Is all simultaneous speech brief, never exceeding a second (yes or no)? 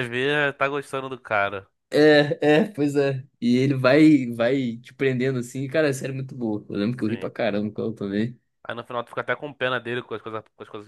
yes